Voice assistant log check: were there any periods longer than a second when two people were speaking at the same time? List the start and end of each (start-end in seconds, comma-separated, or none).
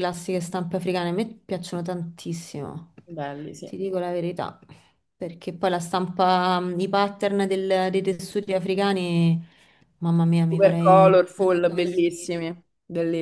10.5-12.4